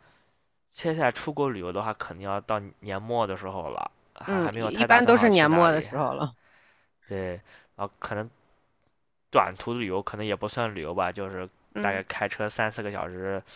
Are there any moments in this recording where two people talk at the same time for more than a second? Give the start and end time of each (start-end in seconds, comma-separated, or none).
4.3-5.9